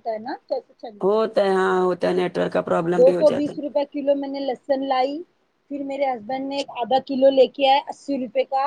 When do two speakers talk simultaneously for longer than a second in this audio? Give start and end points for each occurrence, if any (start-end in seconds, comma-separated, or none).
none